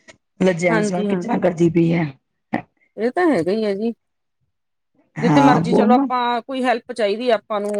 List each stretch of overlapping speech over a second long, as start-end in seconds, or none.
none